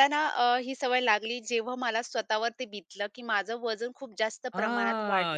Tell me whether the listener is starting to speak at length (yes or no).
yes